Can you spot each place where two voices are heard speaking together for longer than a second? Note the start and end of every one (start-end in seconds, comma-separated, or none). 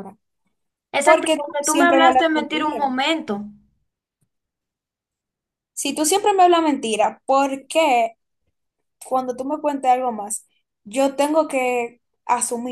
1.0-2.8